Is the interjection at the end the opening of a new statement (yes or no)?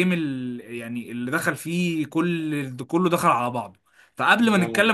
no